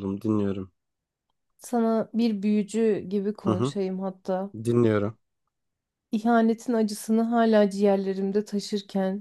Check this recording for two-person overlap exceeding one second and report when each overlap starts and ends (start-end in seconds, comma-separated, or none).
none